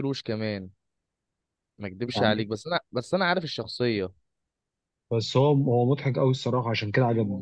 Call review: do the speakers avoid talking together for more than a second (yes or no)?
yes